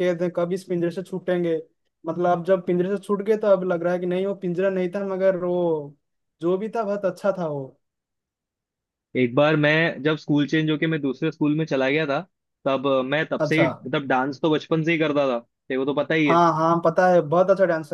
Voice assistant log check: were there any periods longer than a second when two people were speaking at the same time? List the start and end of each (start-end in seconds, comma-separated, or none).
none